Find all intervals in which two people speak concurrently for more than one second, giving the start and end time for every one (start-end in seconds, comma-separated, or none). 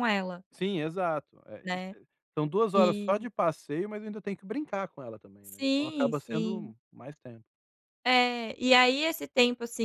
5.5-6.7